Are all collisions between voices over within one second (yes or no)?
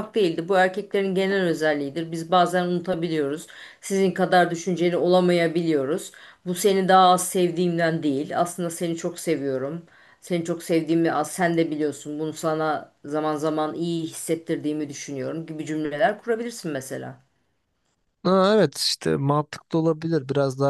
yes